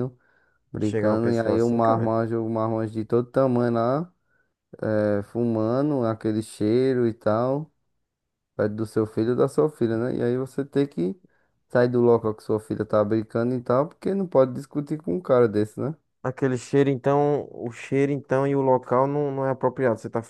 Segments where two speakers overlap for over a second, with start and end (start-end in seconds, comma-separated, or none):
0.8-2.2